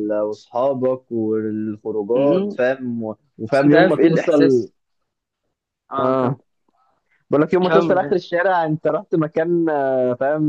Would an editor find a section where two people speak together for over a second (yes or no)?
yes